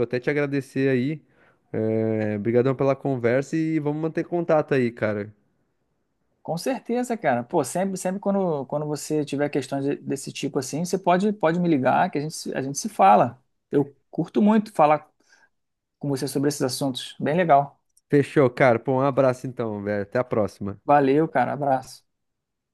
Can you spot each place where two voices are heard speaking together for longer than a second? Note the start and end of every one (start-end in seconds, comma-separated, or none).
none